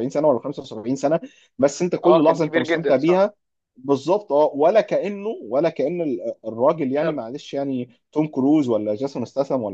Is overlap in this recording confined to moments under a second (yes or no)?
no